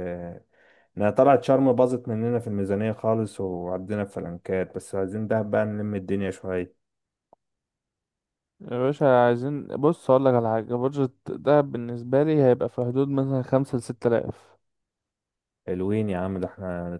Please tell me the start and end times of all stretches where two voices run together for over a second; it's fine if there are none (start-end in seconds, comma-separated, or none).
none